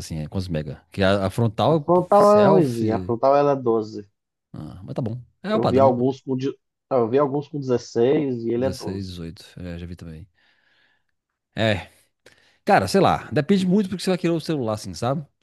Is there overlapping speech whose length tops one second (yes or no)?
yes